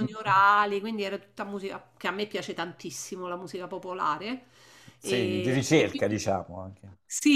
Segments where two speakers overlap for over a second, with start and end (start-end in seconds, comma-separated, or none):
5.0-6.2